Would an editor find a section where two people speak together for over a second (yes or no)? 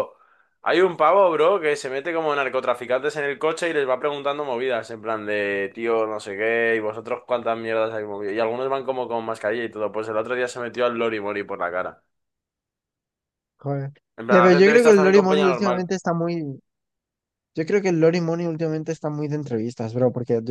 yes